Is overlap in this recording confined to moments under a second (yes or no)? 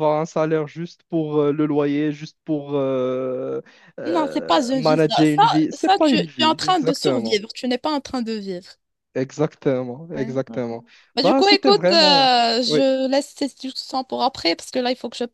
no